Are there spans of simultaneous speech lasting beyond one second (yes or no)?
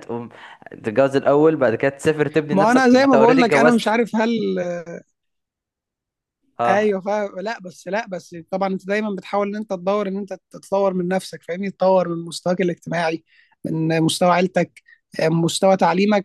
yes